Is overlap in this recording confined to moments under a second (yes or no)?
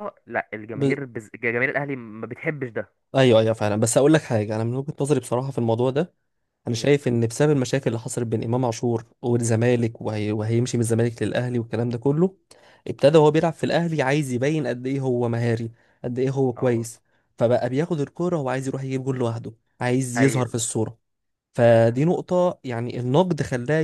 yes